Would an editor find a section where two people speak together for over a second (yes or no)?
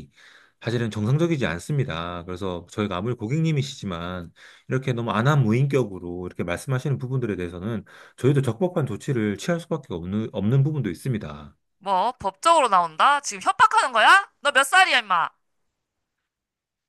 no